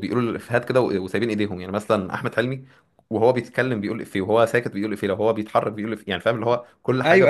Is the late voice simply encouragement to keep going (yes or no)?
no